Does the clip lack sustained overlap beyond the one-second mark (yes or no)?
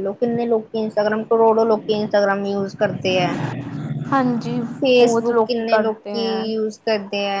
no